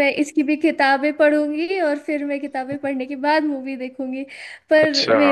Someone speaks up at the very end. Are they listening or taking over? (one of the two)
listening